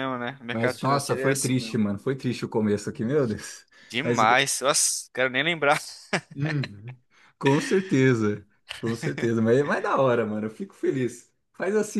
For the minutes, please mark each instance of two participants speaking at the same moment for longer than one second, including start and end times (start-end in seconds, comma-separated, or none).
0.5-1.8